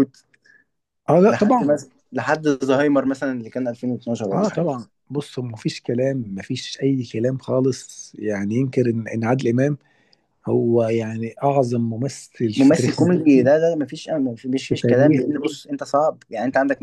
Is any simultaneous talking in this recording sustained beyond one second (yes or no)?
no